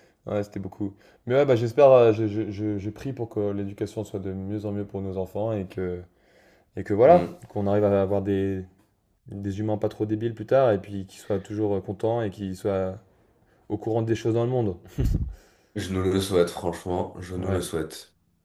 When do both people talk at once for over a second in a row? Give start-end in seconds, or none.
none